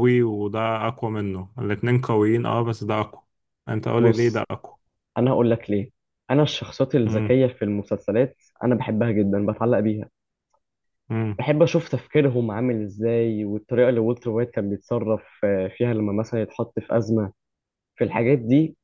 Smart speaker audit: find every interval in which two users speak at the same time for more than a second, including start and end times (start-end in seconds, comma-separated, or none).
none